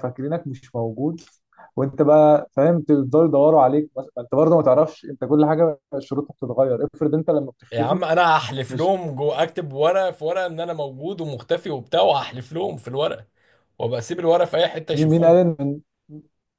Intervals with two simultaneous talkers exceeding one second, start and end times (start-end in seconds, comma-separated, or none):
none